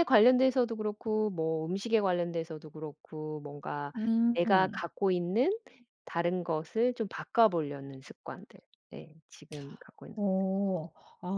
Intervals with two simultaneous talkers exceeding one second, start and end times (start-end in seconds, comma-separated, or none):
none